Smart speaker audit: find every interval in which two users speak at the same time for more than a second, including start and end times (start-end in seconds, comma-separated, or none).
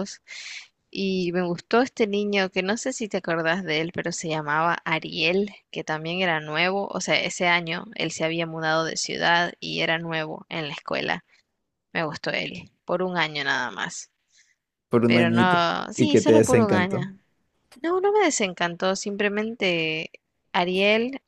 15.1-17.0